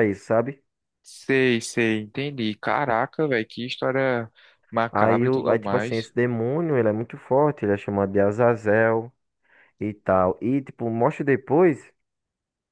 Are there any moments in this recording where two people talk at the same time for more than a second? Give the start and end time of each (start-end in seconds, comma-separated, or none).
4.9-6.1